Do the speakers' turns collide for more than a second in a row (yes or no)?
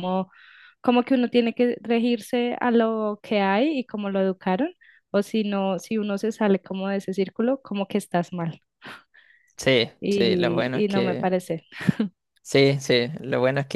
yes